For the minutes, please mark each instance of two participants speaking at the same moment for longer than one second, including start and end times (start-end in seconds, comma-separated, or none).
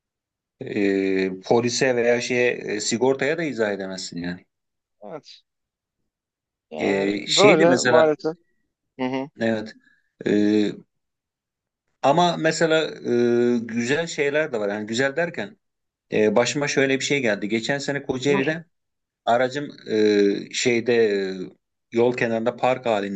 6.8-8.1